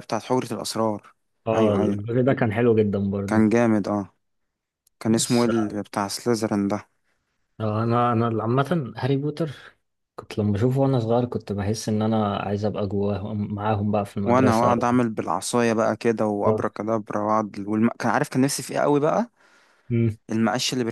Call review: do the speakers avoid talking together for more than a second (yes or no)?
yes